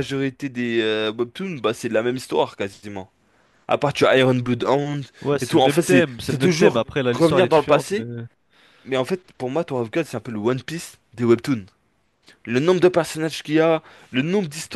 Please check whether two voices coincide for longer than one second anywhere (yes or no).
yes